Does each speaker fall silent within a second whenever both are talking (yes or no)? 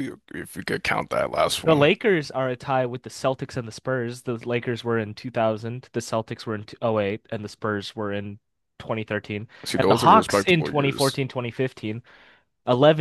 no